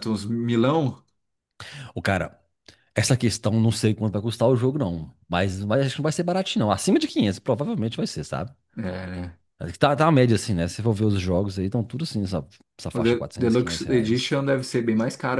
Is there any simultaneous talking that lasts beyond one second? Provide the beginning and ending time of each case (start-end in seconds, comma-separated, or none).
12.9-14.4